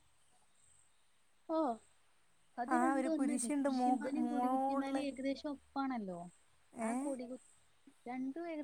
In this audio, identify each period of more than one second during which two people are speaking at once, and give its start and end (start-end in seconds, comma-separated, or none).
2.8-5.0